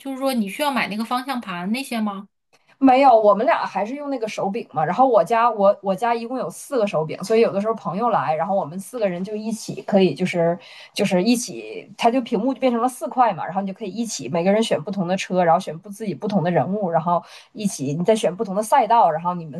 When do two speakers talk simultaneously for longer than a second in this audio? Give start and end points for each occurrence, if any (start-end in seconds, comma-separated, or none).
none